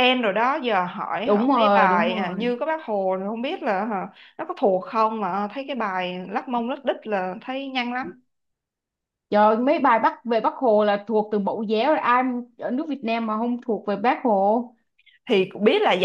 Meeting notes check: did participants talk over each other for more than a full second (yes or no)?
yes